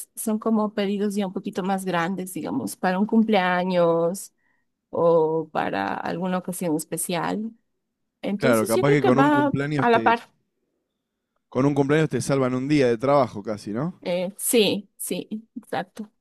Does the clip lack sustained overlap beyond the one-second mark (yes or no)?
no